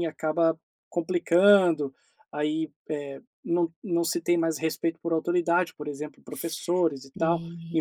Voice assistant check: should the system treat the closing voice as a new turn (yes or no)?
yes